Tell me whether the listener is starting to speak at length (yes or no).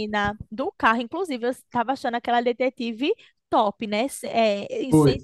no